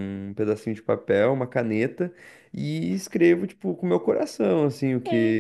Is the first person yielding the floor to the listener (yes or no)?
yes